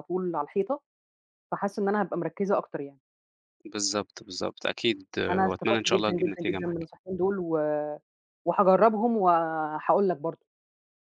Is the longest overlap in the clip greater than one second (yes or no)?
yes